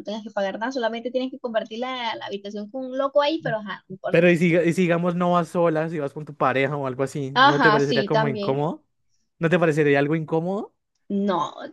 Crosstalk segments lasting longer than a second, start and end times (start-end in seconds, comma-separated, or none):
7.3-8.6